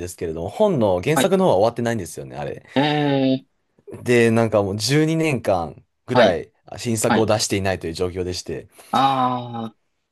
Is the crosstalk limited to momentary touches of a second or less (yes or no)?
yes